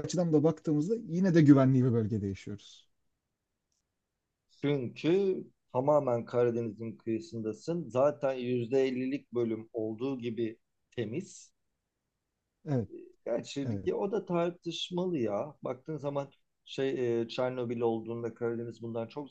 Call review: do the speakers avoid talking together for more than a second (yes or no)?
yes